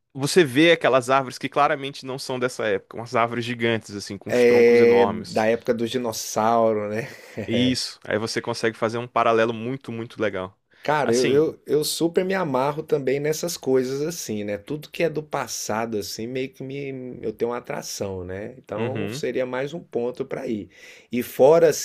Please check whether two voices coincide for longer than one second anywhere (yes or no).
yes